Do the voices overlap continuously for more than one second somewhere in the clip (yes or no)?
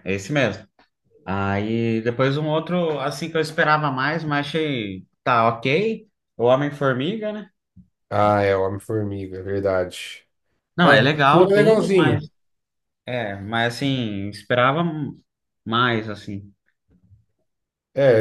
yes